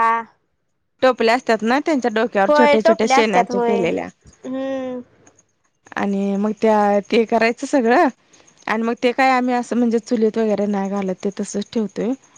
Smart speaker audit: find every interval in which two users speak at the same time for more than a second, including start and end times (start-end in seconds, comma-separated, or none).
2.5-4.1